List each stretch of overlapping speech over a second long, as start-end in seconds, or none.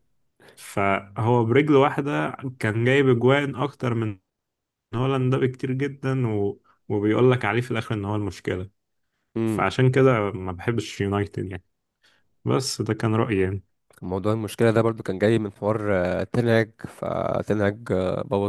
none